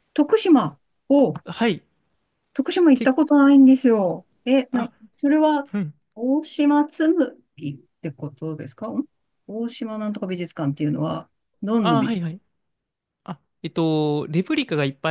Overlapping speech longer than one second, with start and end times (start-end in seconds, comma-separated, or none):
none